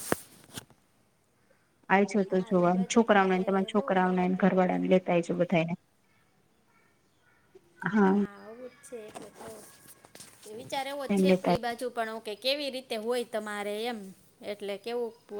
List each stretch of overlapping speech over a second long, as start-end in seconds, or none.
2.2-4.8